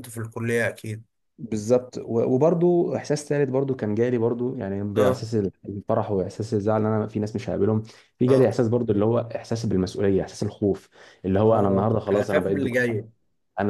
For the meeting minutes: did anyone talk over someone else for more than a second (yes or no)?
yes